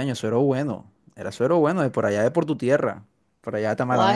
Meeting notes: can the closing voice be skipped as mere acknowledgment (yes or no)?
no